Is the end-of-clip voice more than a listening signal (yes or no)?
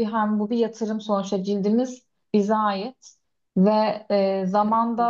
no